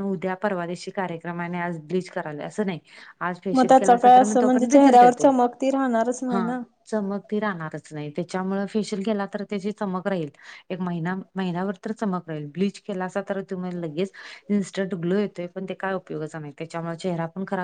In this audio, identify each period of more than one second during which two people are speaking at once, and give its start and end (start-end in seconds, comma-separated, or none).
3.5-5.3